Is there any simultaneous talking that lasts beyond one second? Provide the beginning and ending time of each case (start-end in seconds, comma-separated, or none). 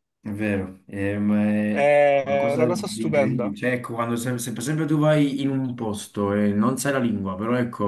1.7-3.5